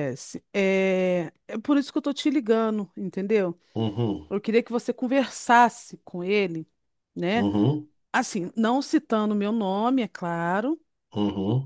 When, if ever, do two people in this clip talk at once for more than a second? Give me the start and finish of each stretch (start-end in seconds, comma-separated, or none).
none